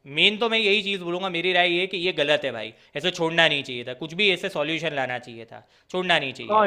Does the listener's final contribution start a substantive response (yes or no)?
yes